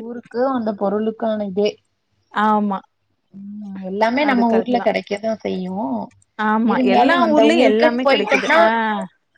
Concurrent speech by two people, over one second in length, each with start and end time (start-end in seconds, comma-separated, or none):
6.7-8.6